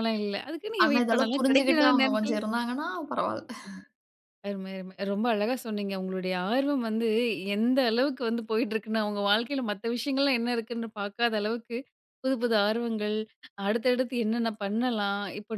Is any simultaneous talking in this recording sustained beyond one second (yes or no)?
yes